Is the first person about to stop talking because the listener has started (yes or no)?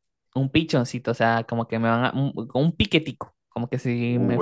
yes